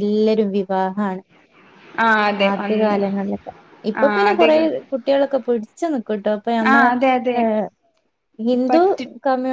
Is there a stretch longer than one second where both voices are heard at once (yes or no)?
no